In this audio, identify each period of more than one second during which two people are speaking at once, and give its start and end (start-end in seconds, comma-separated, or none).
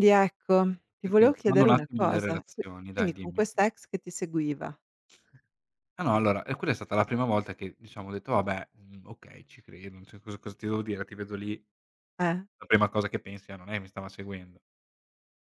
1.0-3.5